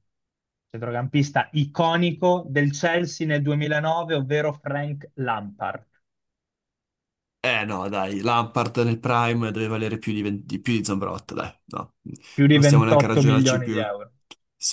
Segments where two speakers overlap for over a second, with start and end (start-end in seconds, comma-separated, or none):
12.5-13.8